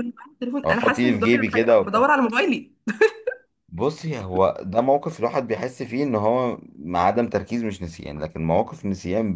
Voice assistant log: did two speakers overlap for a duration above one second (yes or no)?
yes